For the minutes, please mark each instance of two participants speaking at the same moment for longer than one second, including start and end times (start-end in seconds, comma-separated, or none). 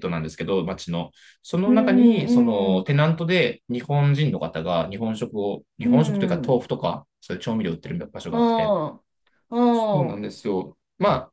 1.7-2.9